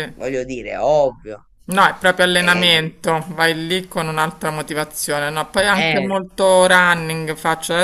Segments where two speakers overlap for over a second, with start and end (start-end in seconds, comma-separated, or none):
none